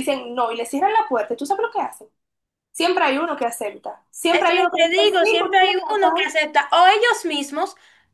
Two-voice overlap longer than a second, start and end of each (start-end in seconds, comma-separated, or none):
4.3-6.3